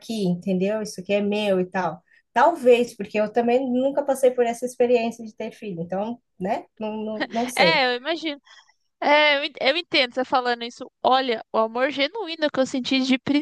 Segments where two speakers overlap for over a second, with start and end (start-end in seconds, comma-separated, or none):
none